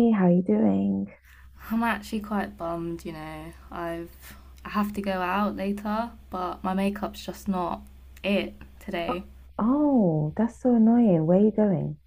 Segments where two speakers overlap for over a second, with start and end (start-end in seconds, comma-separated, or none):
none